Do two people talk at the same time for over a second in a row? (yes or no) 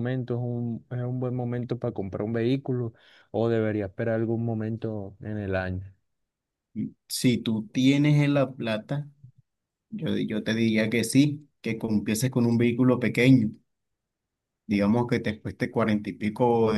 no